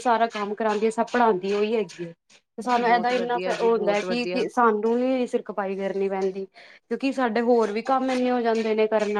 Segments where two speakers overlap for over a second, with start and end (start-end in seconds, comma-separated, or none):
2.9-4.4